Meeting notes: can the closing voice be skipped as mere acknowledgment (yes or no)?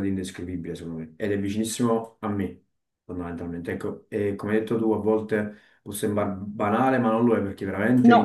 yes